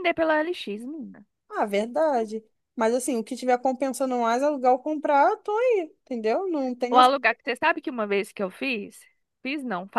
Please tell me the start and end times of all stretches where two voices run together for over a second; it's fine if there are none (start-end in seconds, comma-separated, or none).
none